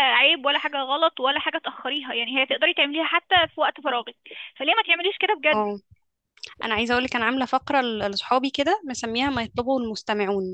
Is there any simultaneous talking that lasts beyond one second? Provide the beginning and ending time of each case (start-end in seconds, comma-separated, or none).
none